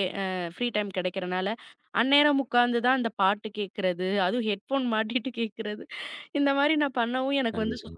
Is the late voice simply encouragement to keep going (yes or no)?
yes